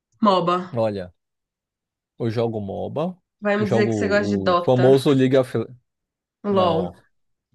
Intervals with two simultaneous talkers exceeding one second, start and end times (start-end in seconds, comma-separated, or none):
3.6-4.9